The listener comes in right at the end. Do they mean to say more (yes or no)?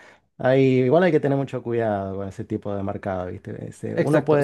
yes